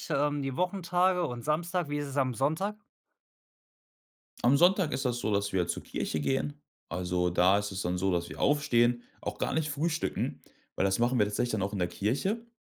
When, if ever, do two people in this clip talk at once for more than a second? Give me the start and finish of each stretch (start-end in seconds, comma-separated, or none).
none